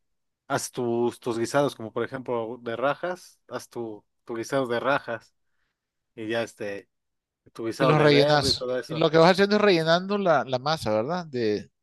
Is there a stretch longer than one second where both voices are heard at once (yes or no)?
yes